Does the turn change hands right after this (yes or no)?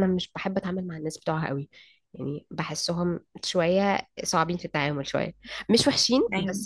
no